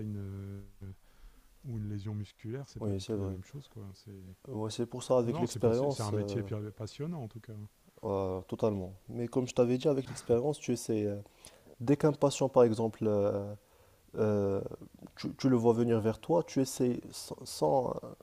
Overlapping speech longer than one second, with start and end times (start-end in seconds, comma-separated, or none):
5.2-6.5